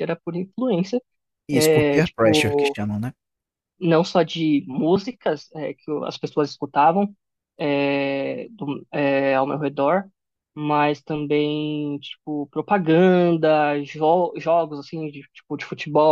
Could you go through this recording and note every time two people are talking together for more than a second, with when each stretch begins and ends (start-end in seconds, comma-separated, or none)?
1.5-2.8